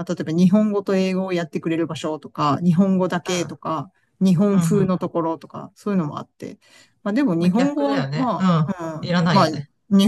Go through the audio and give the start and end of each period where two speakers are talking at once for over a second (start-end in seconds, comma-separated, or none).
7.4-9.5